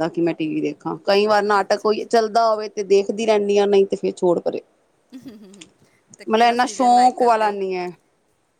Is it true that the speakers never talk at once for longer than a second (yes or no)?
no